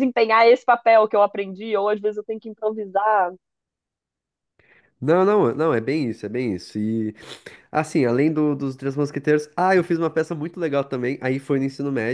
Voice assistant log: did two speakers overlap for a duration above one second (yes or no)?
no